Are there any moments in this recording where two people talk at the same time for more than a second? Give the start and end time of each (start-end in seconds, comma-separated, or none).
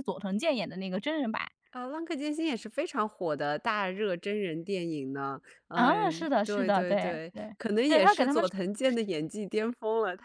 5.8-8.4